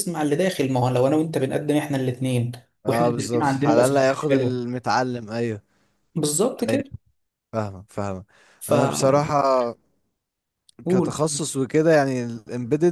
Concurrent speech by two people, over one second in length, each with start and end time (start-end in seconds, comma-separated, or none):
2.9-4.6